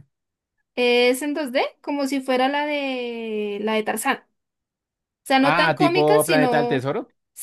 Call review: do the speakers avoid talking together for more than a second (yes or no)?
no